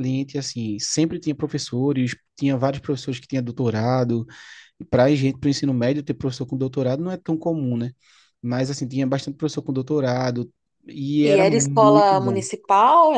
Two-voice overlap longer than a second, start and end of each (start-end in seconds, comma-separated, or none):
11.2-12.5